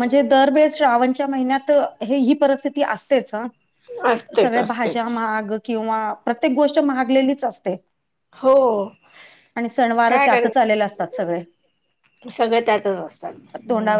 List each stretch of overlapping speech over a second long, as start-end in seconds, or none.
none